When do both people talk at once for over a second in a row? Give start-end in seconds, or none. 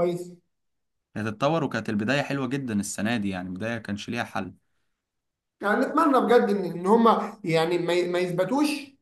none